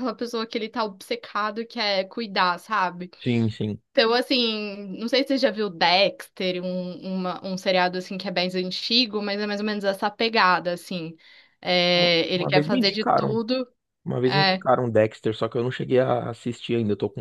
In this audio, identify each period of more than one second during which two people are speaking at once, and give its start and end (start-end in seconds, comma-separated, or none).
11.9-13.4